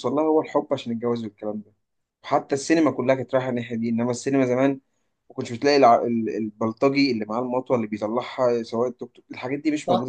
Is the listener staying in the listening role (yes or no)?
no